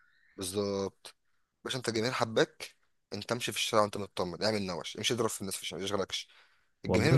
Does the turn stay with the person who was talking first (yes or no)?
yes